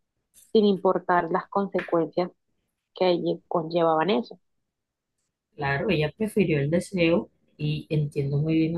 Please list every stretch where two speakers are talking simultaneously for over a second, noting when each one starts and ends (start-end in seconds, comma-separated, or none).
none